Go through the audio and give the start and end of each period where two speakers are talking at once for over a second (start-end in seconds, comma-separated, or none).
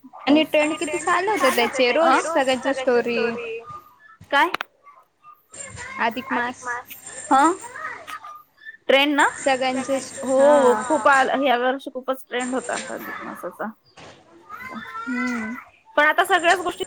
none